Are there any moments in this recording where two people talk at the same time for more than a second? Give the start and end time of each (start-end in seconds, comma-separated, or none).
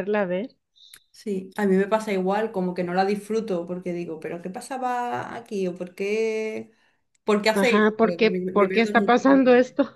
7.5-9.2